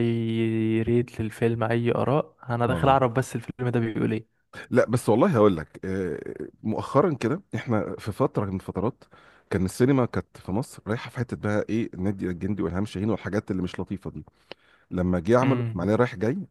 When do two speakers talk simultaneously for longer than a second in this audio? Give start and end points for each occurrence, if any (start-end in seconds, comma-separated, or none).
none